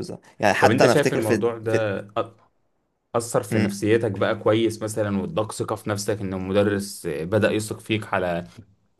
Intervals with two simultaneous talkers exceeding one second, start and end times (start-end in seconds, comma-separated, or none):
0.6-1.8